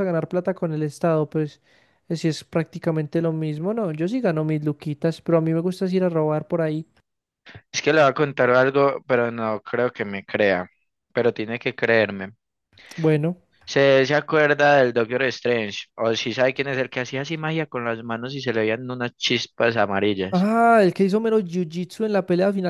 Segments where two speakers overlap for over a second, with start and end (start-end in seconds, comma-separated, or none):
none